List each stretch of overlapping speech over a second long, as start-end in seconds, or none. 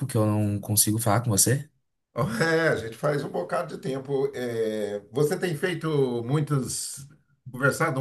none